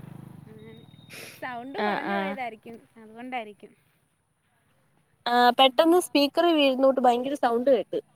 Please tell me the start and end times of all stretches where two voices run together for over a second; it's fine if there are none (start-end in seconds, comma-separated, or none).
none